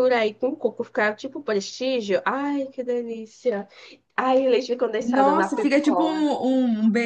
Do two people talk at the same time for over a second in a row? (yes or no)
yes